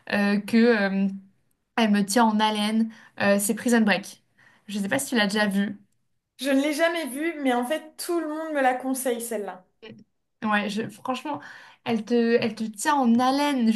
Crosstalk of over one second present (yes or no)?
no